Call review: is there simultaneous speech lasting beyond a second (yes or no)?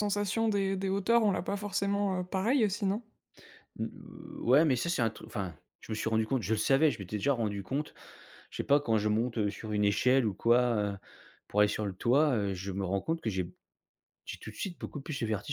no